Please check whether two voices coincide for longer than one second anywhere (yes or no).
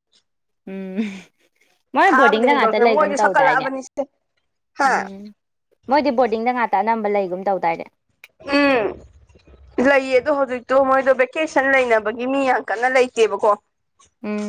yes